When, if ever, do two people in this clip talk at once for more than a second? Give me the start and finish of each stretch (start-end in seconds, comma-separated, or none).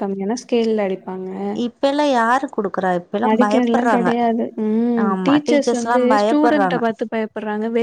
5.1-6.8